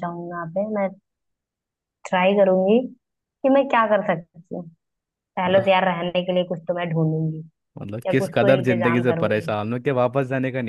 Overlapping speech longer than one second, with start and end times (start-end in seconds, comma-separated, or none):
8.1-9.5